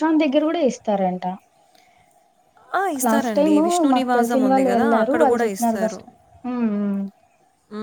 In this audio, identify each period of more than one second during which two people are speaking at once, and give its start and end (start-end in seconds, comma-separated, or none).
3.1-5.2